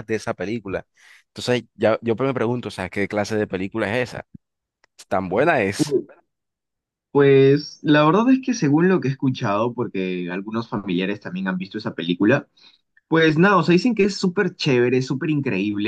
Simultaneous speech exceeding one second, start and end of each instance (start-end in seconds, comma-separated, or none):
none